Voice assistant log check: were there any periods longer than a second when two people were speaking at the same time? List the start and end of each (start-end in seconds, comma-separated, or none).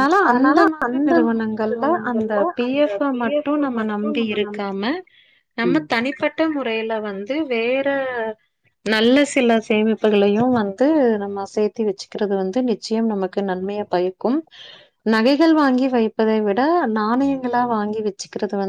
1.7-4.6